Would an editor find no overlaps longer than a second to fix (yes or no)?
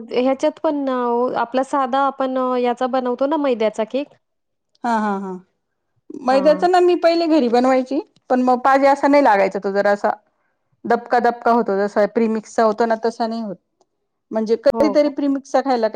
yes